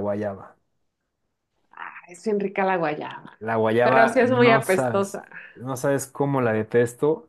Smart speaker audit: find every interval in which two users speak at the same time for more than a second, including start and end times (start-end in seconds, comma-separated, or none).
3.8-5.2